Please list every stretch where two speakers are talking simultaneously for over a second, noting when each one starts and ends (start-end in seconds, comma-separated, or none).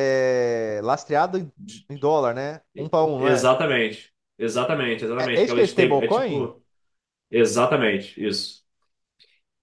5.2-6.5